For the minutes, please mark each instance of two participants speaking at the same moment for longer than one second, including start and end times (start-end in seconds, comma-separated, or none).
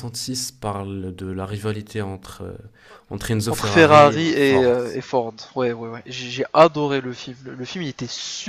3.5-4.8